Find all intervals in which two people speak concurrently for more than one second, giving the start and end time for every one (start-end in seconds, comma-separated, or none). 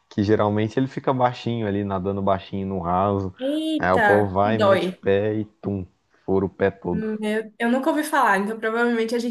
3.8-5.0